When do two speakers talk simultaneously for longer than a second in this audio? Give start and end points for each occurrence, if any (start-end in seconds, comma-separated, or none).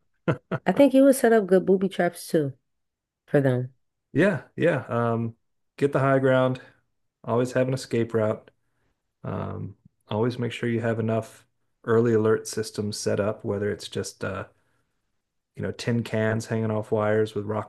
none